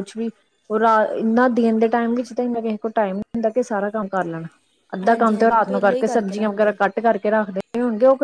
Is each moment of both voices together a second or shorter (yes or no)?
no